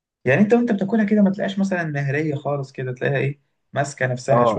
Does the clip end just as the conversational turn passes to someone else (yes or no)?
yes